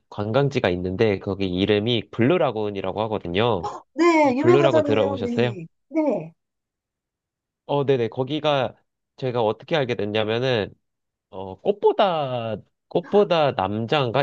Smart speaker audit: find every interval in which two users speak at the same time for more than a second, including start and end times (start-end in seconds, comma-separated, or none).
4.2-5.6